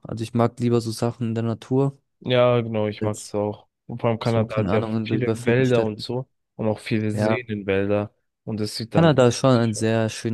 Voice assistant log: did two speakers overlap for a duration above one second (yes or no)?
yes